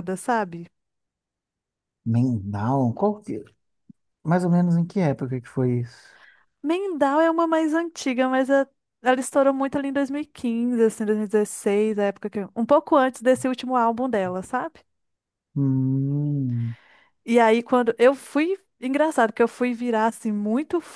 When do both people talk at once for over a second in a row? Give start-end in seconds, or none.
none